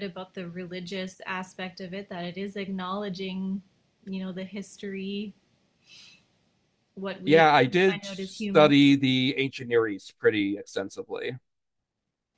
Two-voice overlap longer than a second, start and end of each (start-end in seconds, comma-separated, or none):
7.2-8.7